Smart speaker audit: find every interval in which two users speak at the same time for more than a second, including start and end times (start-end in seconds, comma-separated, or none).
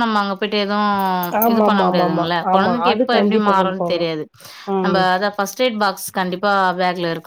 1.5-4.1